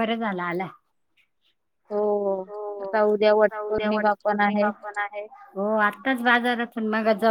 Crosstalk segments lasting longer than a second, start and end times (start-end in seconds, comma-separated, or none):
3.1-4.7